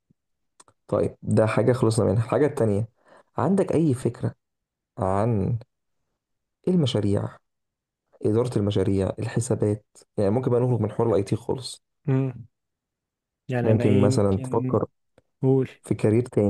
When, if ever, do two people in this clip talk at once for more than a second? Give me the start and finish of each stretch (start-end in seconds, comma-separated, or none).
13.6-14.8